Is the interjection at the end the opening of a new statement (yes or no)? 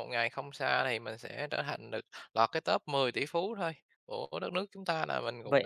yes